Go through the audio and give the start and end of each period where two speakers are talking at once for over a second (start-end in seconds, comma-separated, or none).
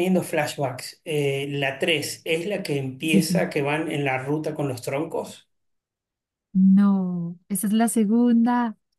none